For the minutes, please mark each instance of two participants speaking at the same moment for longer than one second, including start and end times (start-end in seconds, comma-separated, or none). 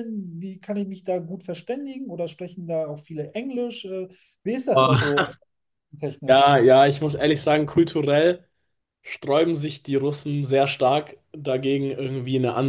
none